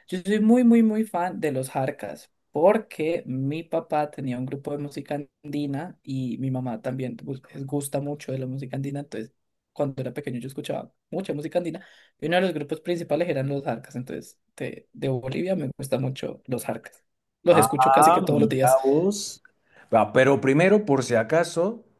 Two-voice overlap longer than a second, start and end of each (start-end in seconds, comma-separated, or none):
17.5-18.8